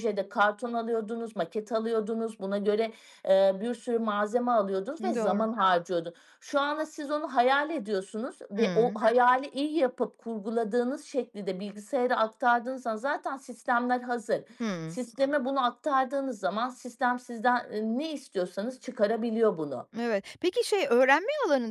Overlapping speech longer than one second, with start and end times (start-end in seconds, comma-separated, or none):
none